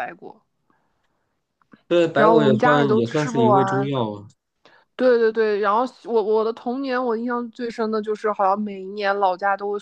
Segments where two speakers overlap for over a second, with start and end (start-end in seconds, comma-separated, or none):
2.1-3.9